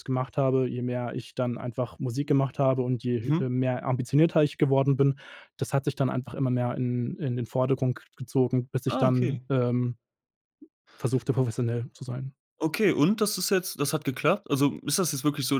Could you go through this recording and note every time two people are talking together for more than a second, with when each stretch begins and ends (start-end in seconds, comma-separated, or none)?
none